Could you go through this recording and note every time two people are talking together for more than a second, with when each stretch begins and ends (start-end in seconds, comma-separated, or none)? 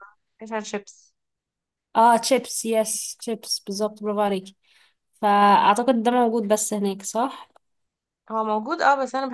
none